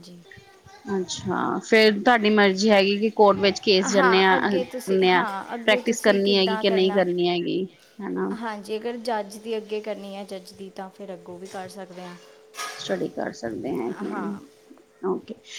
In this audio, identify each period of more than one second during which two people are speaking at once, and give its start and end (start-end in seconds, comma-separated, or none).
4.3-7.0